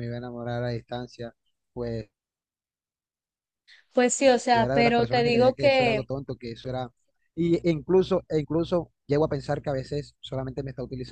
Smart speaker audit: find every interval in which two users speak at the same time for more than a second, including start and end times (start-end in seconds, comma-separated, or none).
4.5-6.0